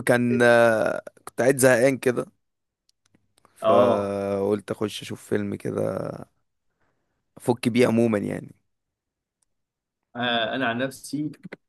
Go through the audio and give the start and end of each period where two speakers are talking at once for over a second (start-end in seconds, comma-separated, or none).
none